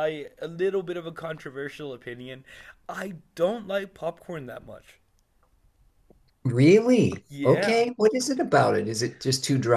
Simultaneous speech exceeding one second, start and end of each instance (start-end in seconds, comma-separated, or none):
none